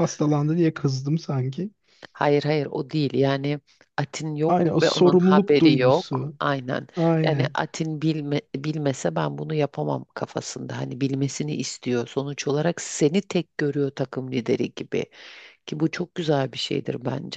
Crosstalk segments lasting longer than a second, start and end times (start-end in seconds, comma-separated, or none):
4.5-6.4